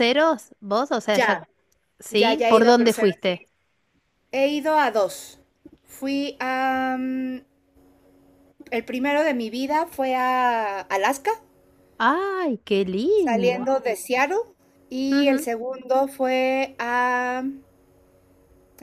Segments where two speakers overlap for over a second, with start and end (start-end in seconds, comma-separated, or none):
2.1-3.3